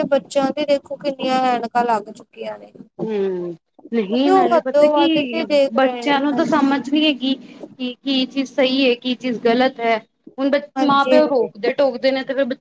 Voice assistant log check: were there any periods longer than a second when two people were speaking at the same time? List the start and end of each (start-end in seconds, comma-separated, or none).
4.0-6.6